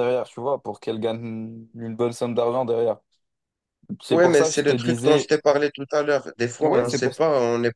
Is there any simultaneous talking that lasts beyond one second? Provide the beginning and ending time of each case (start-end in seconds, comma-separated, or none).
4.1-5.3